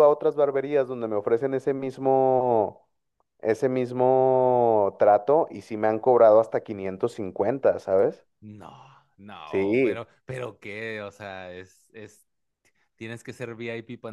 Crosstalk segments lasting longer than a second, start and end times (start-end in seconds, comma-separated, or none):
none